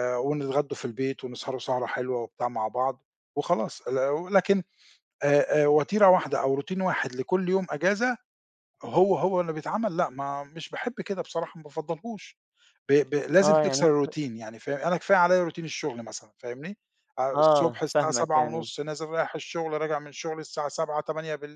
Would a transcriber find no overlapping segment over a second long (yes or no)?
no